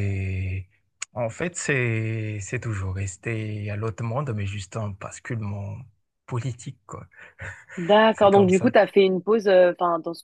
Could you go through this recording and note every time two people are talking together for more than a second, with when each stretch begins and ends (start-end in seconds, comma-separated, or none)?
none